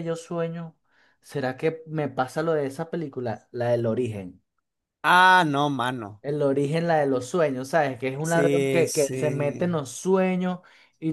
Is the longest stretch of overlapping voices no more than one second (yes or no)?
no